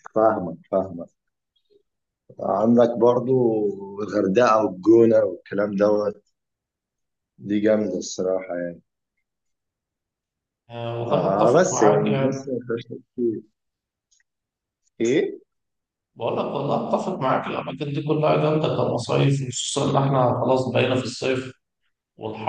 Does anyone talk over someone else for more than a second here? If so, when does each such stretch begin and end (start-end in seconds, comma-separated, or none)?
11.0-12.5